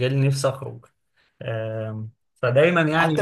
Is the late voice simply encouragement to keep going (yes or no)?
no